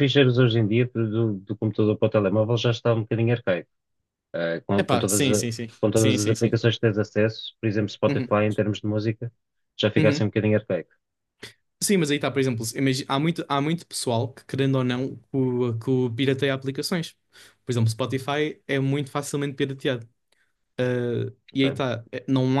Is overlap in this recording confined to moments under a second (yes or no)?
no